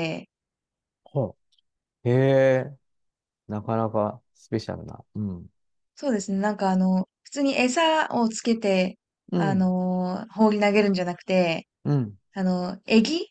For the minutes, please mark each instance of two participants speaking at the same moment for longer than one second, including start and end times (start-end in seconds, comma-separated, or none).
none